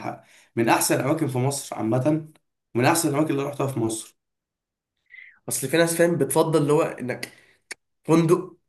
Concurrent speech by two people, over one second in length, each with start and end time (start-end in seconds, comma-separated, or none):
none